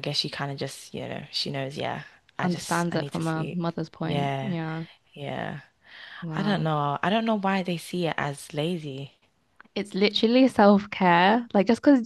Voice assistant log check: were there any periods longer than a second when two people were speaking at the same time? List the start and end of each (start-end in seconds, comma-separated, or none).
2.4-4.6